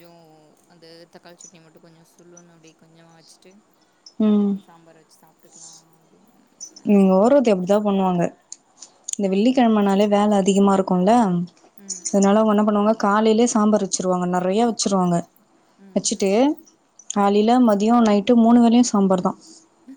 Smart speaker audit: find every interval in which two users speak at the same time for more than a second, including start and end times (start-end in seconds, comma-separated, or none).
none